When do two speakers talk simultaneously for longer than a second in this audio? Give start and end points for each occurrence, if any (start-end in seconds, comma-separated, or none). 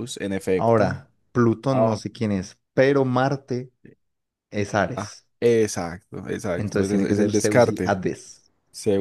6.6-8.0